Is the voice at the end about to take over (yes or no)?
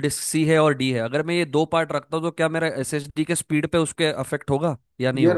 yes